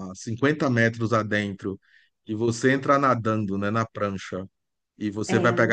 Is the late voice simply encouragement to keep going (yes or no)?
yes